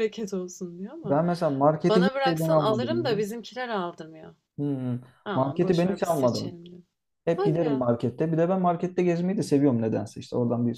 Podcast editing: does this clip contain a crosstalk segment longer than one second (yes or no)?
yes